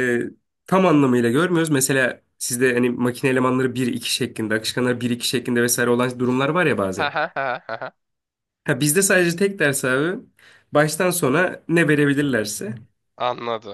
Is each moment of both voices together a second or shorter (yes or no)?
yes